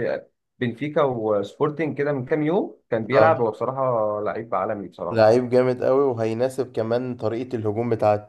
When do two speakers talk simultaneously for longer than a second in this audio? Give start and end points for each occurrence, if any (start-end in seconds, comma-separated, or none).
none